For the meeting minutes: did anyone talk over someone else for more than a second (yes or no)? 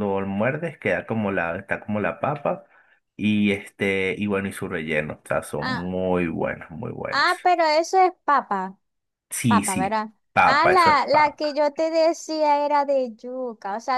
yes